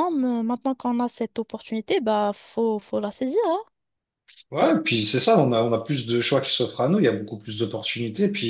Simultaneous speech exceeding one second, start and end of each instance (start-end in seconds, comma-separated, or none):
none